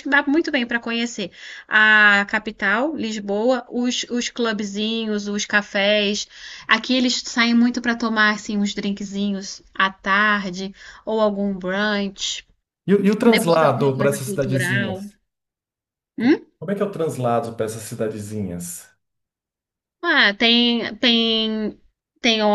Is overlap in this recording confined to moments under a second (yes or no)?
no